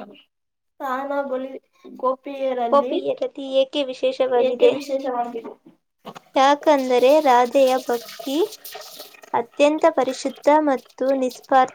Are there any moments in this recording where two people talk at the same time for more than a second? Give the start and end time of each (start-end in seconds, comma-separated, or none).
none